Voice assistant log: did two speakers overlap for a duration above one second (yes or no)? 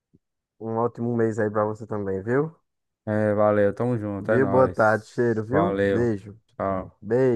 yes